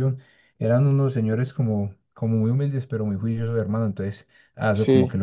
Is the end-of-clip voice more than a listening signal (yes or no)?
no